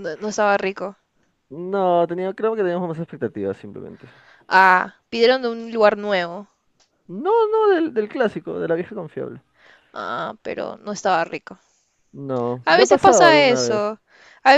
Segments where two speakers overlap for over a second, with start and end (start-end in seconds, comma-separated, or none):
12.6-13.9